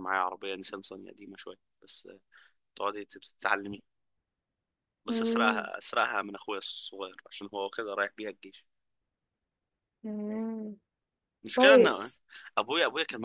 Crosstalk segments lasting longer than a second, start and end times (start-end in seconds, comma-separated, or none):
none